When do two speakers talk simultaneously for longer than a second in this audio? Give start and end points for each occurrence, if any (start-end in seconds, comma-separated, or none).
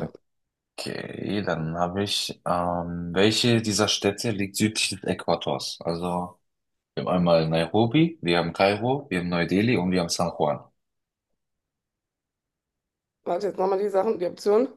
none